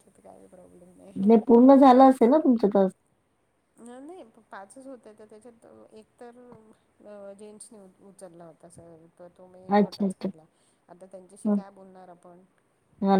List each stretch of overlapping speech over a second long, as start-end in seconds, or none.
none